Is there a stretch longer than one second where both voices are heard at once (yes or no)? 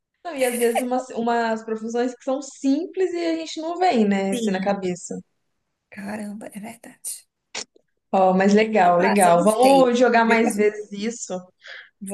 yes